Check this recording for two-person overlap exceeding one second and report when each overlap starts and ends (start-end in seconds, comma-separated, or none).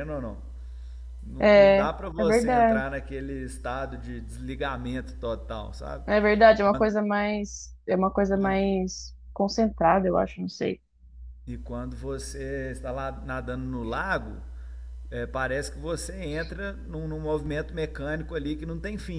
1.4-2.8